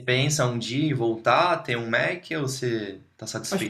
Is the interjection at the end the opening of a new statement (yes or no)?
yes